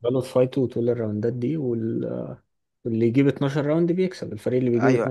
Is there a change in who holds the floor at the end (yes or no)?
yes